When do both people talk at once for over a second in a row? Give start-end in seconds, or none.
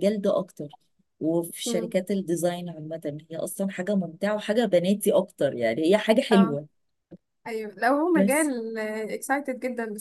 none